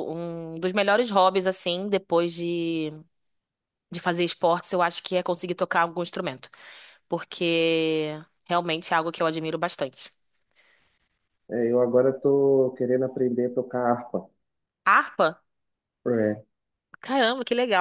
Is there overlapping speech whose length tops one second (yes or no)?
no